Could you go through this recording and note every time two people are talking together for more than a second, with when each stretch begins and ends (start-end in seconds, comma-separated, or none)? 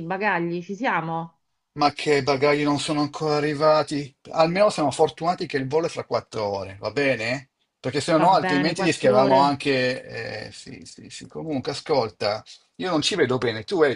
8.2-9.4